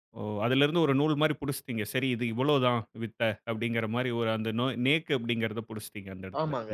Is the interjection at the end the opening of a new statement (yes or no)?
yes